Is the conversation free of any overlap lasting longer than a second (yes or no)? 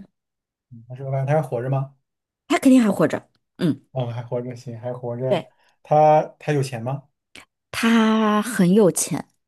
yes